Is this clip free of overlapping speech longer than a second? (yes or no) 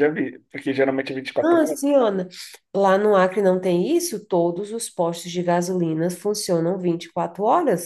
yes